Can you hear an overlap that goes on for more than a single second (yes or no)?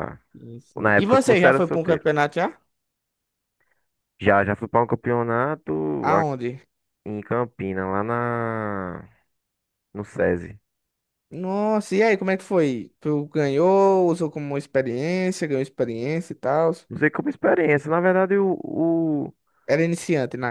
yes